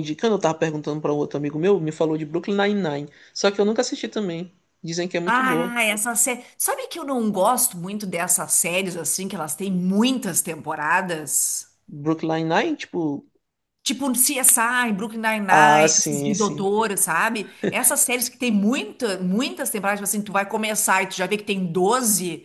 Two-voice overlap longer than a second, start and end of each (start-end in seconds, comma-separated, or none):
15.5-16.7